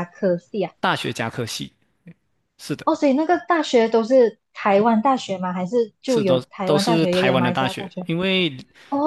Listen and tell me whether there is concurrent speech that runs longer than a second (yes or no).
yes